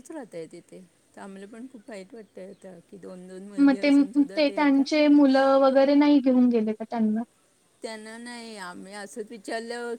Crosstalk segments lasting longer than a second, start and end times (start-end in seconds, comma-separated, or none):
none